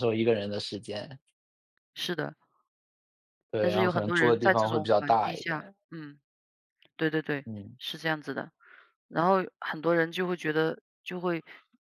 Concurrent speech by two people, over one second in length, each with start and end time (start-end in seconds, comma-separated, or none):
3.6-5.7